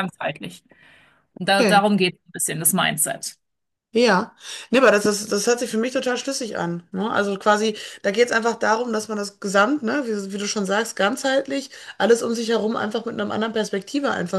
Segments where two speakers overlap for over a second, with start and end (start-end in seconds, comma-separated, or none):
none